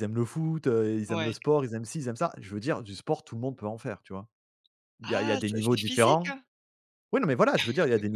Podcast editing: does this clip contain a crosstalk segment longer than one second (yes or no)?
yes